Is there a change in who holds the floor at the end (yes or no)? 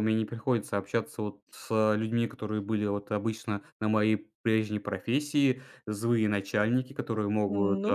no